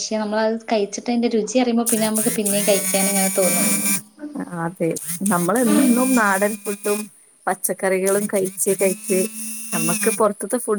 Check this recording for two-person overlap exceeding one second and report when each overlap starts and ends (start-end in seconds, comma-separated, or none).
none